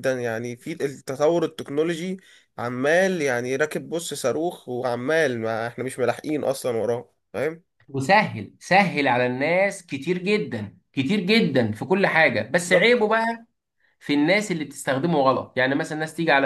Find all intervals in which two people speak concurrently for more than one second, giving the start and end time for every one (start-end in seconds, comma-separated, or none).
none